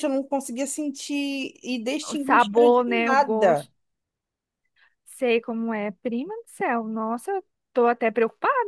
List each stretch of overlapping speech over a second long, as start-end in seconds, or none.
2.1-3.7